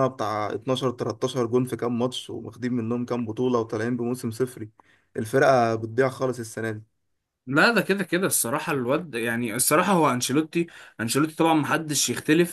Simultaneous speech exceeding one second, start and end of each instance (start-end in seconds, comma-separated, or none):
none